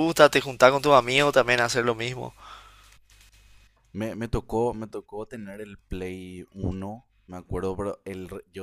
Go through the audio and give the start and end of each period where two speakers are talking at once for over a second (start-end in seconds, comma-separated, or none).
none